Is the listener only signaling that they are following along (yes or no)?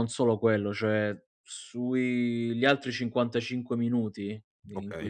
yes